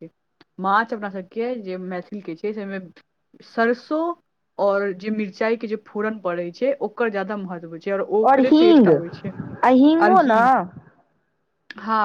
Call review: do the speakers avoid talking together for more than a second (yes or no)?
no